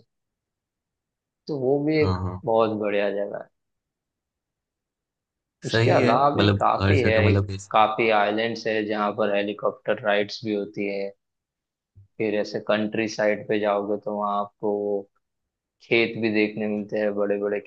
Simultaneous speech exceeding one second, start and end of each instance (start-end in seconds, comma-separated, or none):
5.7-7.8